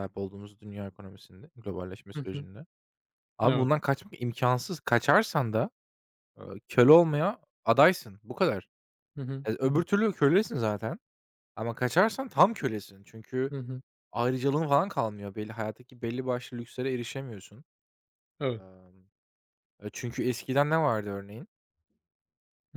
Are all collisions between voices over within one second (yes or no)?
yes